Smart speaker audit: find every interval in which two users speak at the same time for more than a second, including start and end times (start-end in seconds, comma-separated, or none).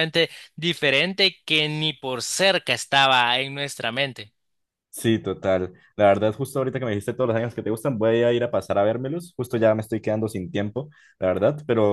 none